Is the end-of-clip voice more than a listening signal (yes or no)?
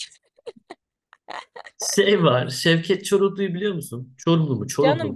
yes